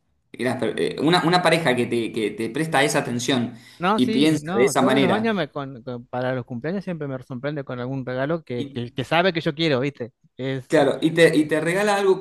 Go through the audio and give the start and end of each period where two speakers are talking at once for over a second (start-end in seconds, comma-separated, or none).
3.9-5.4